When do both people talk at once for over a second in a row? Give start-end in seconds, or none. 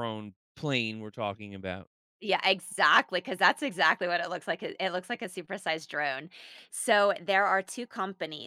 none